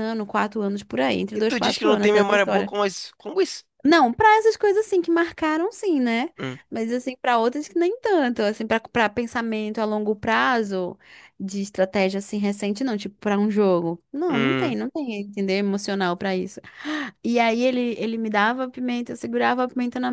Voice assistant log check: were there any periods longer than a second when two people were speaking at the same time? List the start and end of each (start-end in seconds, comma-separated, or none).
1.4-2.7